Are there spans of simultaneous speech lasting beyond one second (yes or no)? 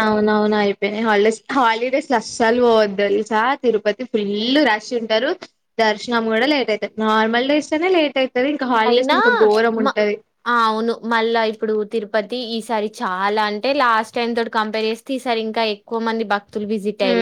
no